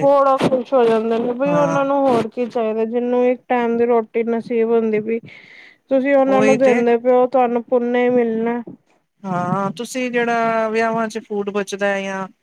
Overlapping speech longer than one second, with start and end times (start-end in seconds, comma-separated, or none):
none